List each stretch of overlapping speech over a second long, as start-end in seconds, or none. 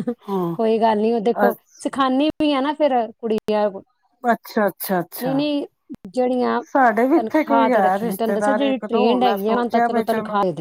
7.1-10.0